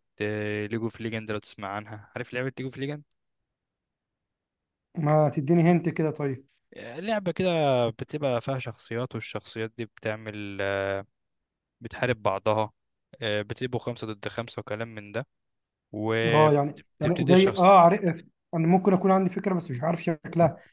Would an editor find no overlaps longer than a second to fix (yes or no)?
no